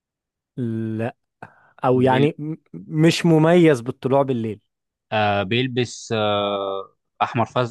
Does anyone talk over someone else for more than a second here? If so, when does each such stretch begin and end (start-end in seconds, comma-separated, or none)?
none